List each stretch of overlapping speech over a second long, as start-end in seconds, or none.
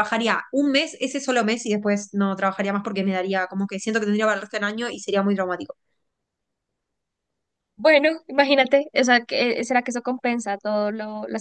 none